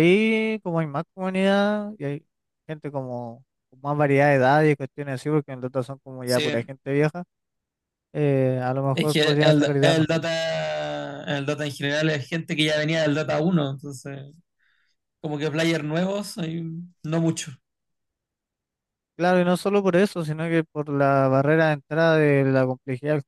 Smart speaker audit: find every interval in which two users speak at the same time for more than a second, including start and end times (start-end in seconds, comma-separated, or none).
8.9-10.3